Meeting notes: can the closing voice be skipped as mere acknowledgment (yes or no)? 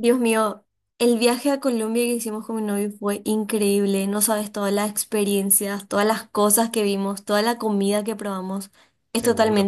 yes